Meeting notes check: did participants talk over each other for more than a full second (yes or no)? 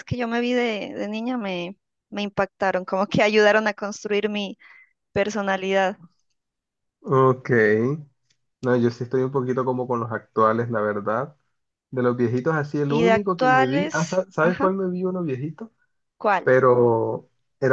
yes